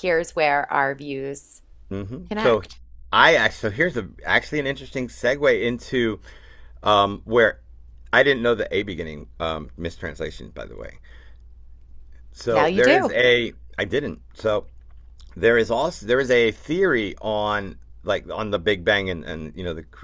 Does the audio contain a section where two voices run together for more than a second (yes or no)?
no